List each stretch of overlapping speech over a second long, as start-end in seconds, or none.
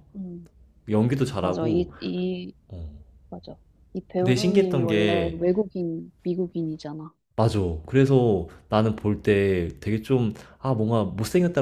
4.2-5.4